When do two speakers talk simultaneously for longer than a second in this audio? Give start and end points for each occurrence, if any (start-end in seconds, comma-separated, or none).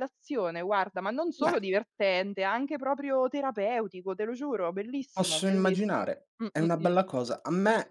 5.2-6.9